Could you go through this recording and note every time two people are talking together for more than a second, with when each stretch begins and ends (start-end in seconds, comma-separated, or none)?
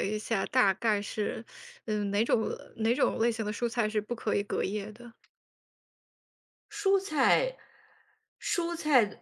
none